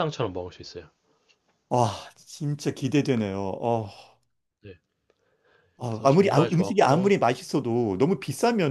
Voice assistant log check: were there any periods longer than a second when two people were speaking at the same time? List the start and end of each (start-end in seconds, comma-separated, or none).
5.8-7.1